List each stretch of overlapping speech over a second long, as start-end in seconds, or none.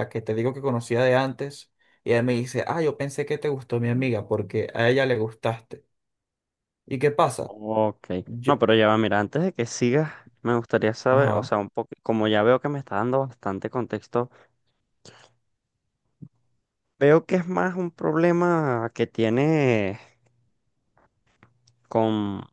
none